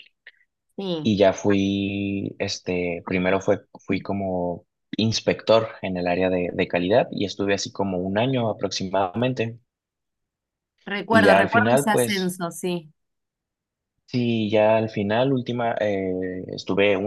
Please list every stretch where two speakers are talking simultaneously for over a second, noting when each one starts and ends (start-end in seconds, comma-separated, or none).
11.1-12.3